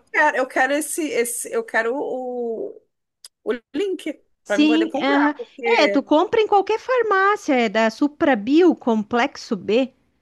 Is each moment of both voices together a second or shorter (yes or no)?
no